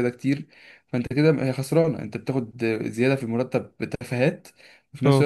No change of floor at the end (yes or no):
yes